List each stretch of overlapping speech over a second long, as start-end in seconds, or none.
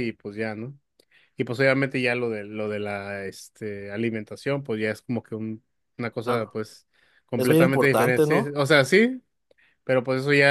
7.4-8.6